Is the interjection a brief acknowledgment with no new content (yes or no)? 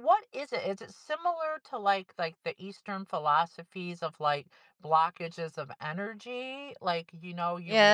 no